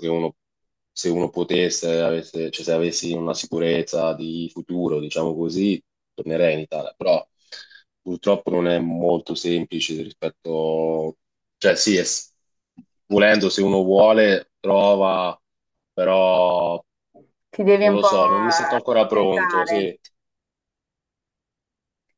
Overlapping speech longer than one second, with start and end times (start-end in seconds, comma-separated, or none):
17.8-19.9